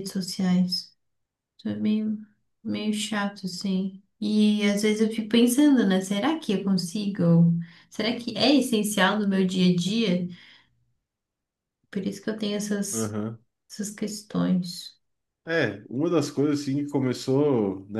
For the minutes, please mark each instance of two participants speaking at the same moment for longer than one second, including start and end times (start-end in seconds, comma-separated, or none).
none